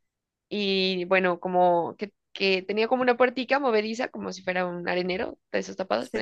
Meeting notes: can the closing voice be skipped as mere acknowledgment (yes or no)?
yes